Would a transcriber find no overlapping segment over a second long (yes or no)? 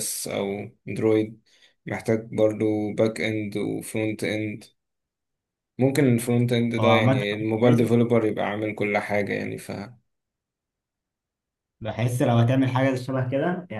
yes